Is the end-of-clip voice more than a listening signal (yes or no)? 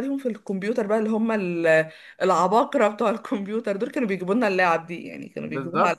yes